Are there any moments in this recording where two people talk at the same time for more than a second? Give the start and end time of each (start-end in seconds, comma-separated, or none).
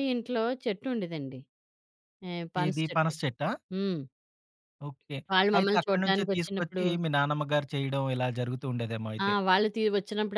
5.6-6.8